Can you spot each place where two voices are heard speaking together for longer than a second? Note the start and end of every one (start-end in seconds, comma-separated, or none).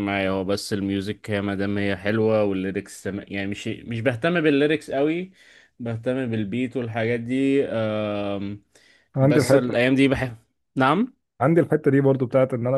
none